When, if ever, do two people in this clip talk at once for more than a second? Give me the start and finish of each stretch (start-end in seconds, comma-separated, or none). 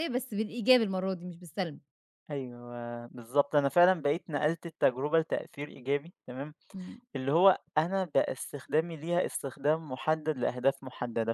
none